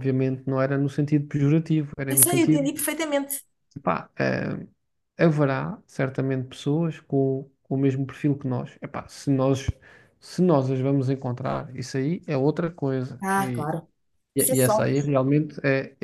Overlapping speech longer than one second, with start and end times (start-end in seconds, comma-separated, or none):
none